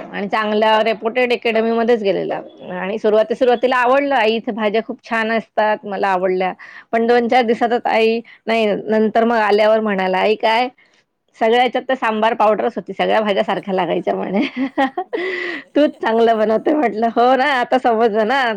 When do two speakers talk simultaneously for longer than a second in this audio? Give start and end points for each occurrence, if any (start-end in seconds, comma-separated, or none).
none